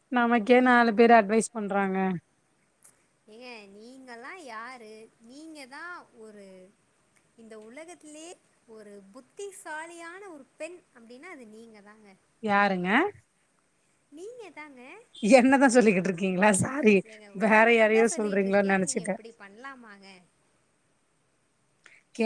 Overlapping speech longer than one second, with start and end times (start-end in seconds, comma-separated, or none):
17.4-19.1